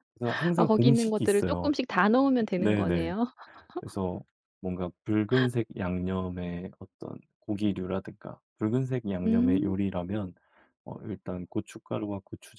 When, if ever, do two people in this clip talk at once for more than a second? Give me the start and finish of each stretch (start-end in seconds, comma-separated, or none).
0.6-1.8